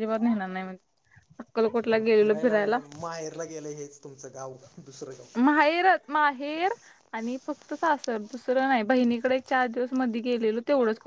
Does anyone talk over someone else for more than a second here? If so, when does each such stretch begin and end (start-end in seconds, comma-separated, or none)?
none